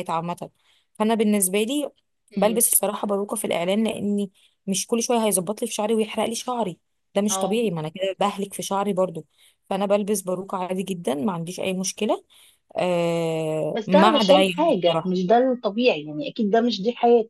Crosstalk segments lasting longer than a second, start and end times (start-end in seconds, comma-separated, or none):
13.7-15.2